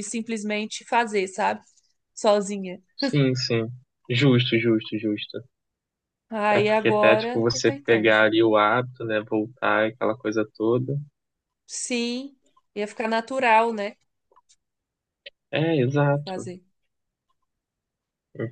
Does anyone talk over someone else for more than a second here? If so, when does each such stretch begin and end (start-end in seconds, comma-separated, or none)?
6.5-8.1